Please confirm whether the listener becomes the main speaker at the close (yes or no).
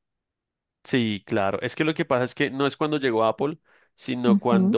no